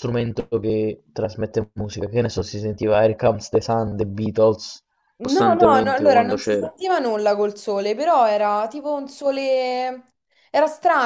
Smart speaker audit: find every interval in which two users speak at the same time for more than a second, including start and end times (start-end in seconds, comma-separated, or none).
5.2-6.7